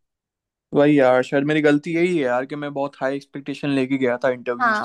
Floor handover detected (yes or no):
yes